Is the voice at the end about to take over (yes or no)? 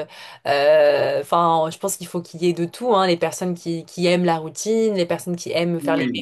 no